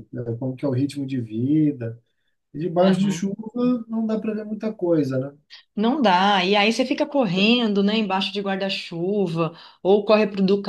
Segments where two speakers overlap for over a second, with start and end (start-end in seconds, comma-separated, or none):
none